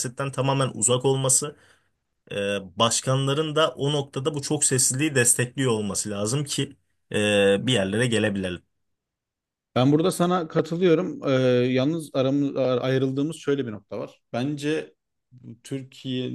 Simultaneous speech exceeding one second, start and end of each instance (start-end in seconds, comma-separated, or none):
none